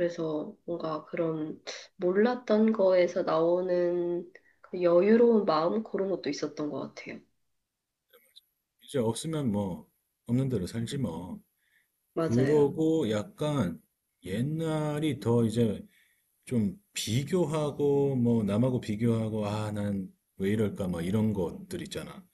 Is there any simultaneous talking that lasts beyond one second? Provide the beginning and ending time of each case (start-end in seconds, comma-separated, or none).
none